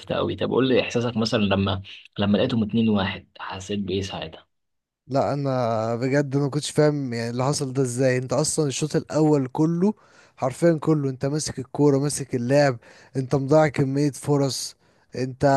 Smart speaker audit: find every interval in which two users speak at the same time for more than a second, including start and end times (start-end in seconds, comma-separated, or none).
none